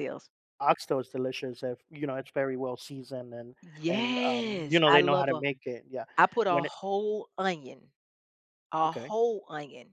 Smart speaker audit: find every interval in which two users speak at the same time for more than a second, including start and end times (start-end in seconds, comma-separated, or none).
3.6-5.4